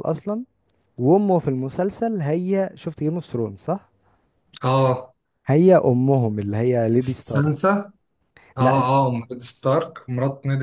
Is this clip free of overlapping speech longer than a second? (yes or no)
yes